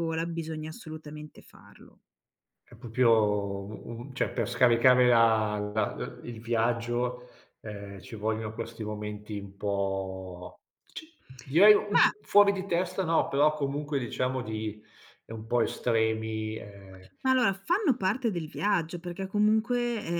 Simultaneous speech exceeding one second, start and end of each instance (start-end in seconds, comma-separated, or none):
none